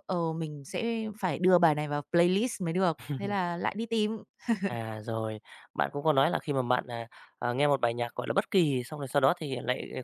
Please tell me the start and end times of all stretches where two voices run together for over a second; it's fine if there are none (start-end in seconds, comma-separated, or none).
none